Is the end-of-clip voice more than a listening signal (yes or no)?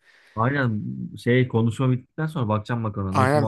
yes